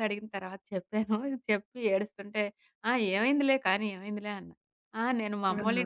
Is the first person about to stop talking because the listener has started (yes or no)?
no